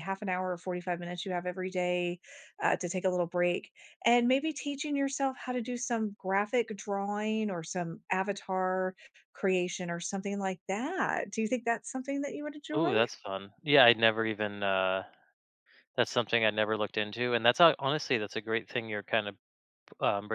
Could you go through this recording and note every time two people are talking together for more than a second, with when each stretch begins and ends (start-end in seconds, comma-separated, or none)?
none